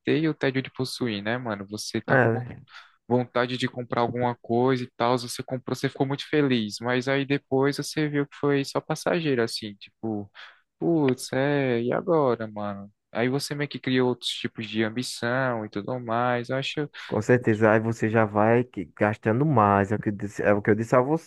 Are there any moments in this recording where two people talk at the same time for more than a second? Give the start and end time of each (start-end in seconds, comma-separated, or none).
none